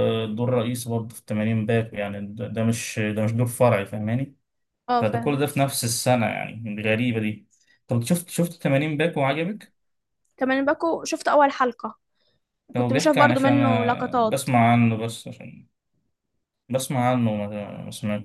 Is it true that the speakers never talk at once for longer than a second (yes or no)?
no